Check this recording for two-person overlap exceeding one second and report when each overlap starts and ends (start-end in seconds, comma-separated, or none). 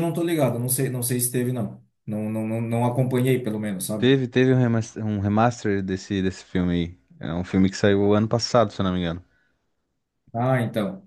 none